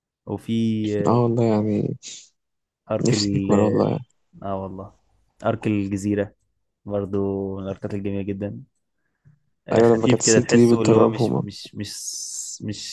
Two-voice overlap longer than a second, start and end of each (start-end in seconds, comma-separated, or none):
9.7-11.4